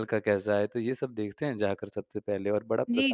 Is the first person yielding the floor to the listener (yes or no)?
yes